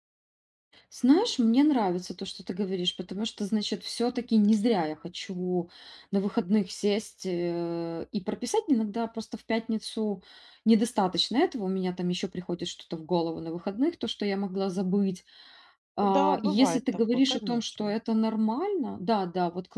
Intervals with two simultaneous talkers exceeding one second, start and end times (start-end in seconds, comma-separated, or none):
16.0-18.0